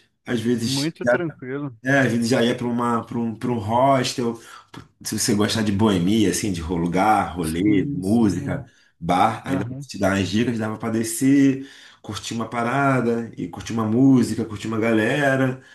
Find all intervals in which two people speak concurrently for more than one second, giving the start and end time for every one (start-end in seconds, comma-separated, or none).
7.4-8.6